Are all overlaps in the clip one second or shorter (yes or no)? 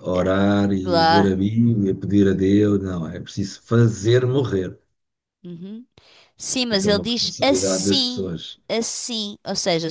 no